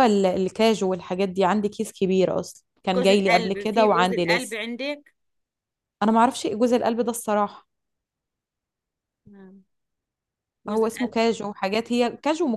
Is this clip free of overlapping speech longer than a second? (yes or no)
no